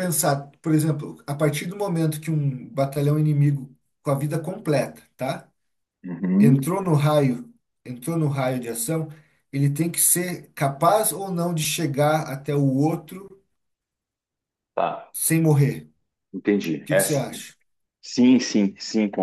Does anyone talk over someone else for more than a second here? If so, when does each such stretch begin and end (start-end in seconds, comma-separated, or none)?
none